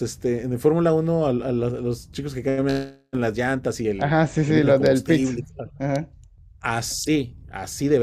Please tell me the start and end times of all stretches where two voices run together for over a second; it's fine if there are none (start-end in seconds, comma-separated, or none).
4.0-5.4